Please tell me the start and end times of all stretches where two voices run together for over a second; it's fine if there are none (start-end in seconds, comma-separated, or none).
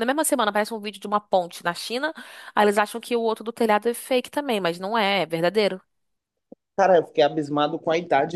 none